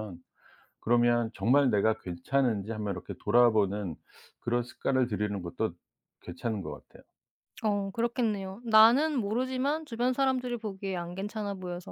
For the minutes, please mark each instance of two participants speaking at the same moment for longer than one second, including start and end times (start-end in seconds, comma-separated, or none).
none